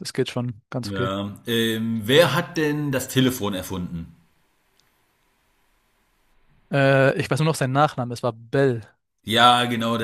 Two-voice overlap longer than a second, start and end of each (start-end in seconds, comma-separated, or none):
none